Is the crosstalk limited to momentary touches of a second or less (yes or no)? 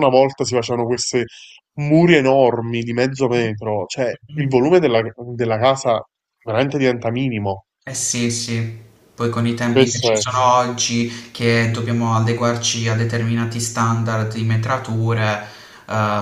yes